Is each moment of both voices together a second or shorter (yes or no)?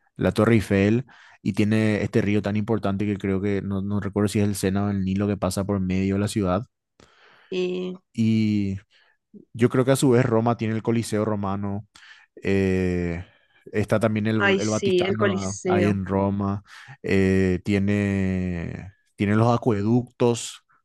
no